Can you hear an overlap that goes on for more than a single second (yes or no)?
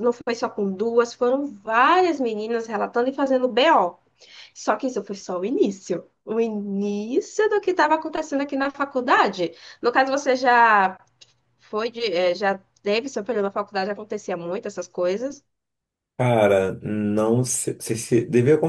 no